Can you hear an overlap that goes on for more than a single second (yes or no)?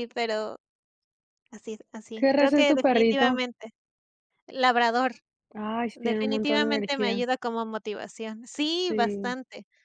yes